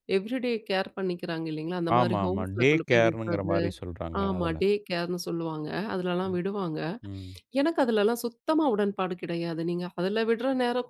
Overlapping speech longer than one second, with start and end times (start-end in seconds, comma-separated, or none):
2.0-3.6